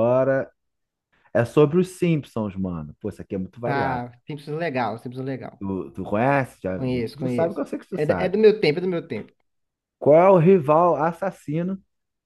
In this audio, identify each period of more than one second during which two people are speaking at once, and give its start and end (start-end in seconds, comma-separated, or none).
6.7-8.4